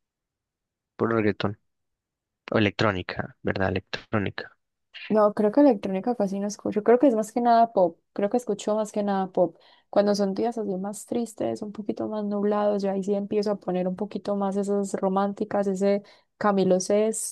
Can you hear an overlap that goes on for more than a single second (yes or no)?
no